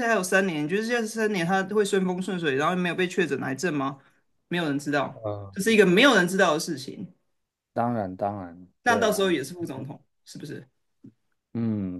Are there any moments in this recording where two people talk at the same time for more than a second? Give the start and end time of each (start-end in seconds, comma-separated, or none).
none